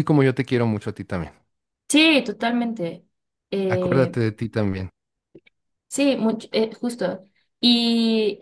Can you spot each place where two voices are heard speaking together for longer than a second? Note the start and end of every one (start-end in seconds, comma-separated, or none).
none